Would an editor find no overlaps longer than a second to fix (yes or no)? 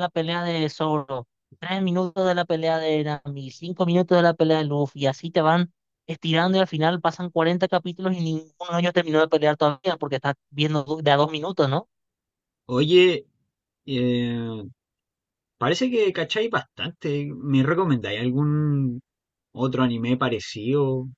yes